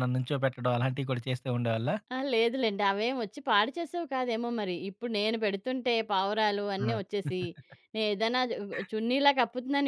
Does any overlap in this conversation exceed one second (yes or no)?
no